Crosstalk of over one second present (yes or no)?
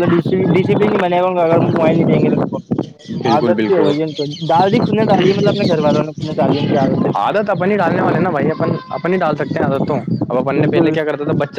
no